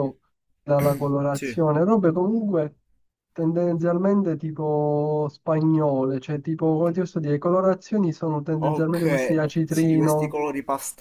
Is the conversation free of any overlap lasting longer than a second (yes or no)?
no